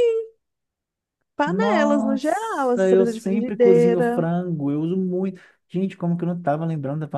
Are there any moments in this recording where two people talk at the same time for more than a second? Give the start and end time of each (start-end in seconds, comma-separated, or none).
1.4-4.2